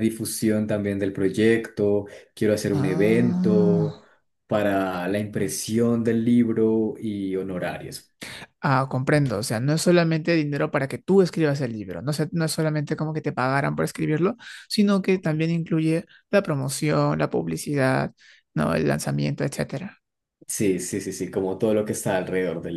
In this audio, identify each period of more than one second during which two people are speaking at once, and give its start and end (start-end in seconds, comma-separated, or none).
2.7-3.9